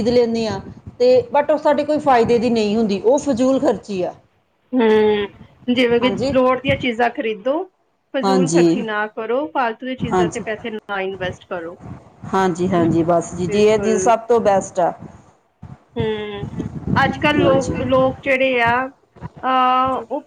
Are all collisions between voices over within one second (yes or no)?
no